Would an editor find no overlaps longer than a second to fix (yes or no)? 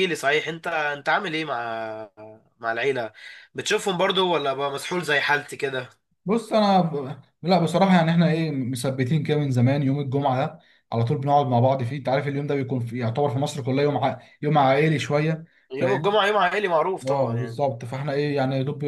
yes